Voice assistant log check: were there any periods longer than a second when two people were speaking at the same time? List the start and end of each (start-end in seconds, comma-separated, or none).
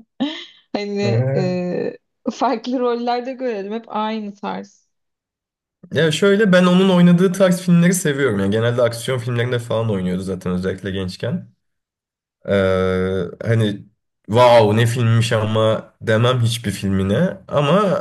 none